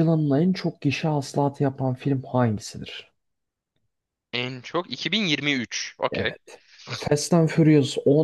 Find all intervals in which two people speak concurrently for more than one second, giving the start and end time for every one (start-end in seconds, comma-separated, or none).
none